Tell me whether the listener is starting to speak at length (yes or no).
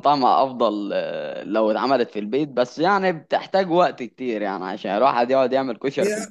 yes